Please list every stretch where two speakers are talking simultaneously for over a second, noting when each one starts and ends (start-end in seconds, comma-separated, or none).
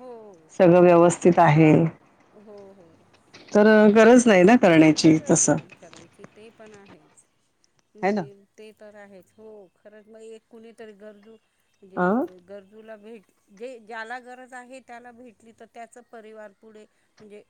none